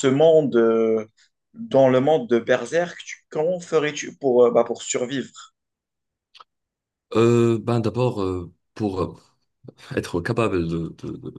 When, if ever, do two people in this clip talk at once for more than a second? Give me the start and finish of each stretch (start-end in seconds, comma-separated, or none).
none